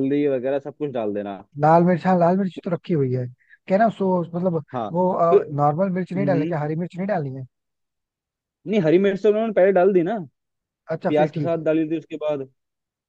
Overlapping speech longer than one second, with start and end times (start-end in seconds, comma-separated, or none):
none